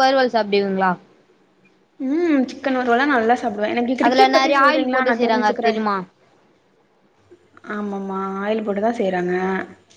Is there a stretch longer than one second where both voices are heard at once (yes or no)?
yes